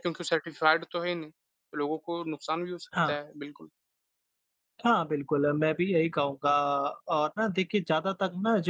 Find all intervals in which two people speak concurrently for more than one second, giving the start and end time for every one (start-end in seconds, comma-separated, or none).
none